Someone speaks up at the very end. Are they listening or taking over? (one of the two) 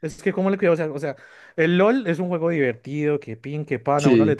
listening